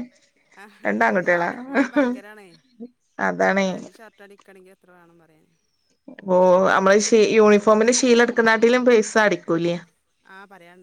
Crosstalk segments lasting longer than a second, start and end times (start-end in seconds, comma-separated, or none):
none